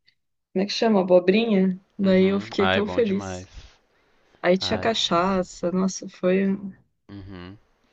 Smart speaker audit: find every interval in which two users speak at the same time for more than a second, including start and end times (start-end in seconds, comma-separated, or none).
2.0-3.5